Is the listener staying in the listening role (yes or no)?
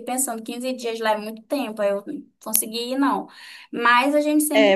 no